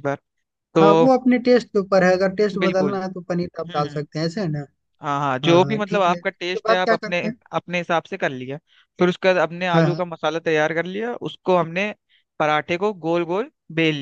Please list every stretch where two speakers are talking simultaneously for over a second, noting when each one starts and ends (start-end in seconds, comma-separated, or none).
5.5-7.3